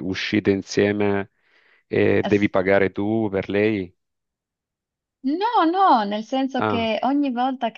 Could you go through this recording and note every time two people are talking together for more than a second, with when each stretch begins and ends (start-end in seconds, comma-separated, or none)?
none